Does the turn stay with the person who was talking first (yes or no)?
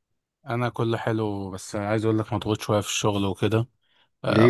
yes